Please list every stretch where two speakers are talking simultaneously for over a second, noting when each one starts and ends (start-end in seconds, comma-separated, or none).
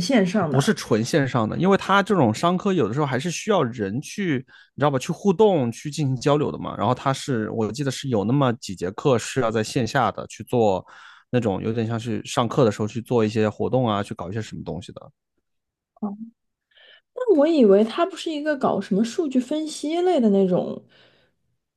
none